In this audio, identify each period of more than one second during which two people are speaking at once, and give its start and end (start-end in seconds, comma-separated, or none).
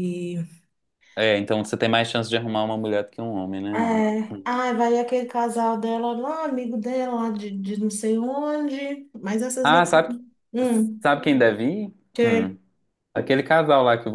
none